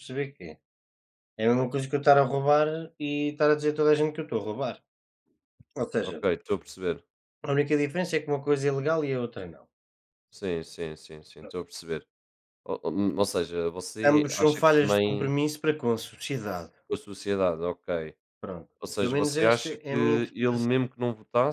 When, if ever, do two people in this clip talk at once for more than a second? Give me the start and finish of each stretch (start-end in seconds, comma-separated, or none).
14.0-15.3, 18.8-20.8